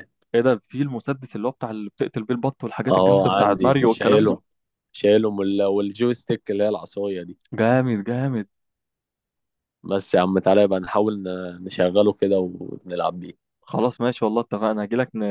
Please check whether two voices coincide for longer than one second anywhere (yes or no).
yes